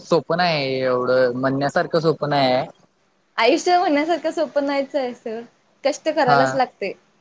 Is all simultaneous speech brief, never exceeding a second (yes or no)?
yes